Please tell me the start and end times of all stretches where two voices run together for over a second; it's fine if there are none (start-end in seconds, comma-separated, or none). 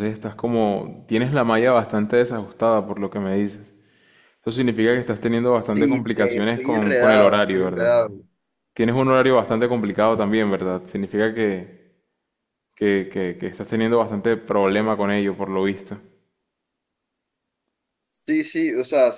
5.5-8.0